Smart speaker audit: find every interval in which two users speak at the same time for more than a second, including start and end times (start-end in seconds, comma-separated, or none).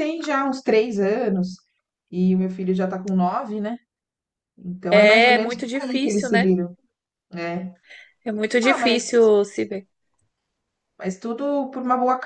4.9-6.5